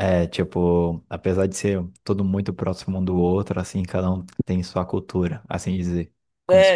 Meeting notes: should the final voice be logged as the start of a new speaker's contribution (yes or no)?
yes